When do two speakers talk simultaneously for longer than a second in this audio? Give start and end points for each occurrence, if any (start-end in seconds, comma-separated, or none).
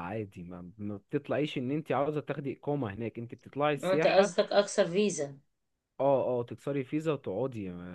none